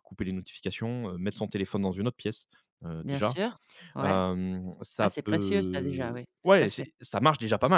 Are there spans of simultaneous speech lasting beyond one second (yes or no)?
yes